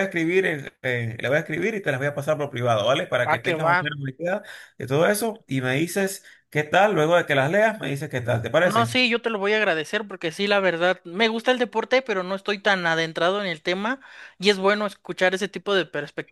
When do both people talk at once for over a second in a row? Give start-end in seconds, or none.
none